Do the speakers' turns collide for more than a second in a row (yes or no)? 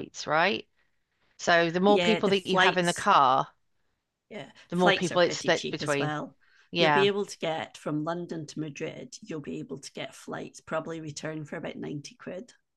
yes